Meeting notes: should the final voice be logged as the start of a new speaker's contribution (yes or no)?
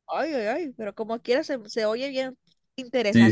yes